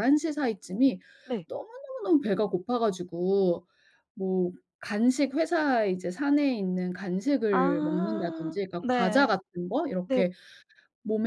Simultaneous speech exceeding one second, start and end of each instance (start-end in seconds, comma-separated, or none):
7.5-9.3